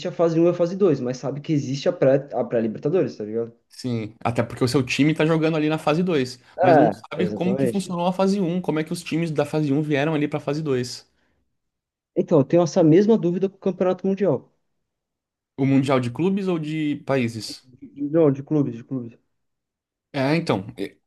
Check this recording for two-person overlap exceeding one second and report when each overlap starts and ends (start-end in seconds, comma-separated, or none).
6.5-8.0